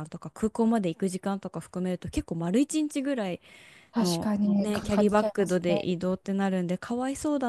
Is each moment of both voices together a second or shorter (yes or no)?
no